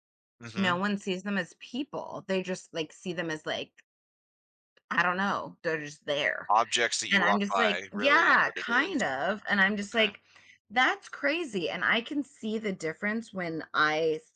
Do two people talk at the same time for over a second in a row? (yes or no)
yes